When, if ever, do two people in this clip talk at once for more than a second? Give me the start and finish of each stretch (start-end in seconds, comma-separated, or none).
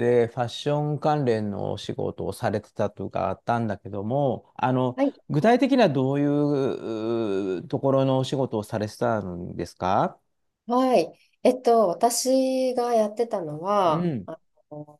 none